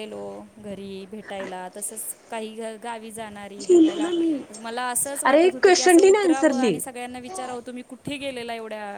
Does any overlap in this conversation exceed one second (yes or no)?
yes